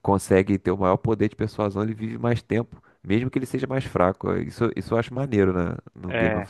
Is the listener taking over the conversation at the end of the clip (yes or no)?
yes